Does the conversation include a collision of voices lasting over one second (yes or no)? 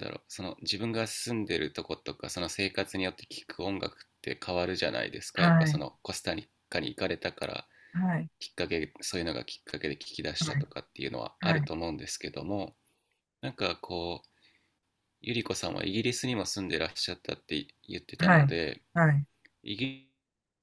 no